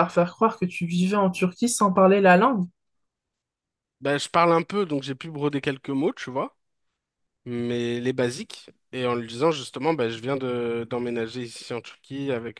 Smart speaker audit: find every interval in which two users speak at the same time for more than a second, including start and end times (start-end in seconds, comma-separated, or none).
none